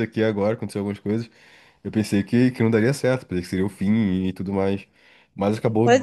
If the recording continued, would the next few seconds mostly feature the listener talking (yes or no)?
yes